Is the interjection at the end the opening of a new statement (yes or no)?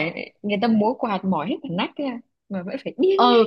yes